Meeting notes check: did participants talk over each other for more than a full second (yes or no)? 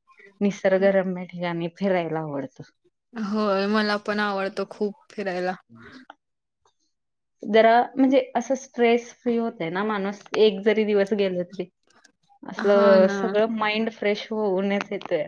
no